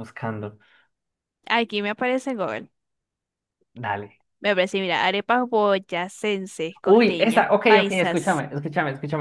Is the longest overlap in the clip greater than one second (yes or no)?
yes